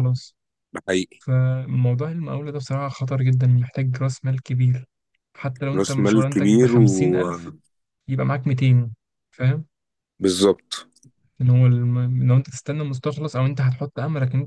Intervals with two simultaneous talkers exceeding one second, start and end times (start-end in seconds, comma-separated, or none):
5.7-7.5